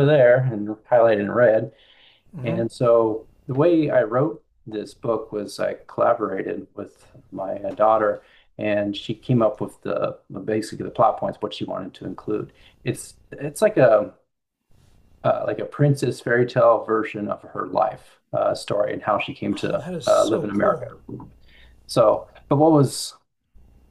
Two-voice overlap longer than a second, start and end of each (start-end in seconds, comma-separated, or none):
19.5-20.9